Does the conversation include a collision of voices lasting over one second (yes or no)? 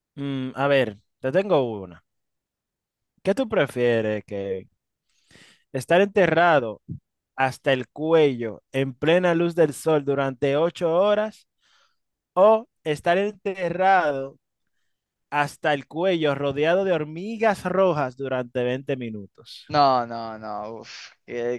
no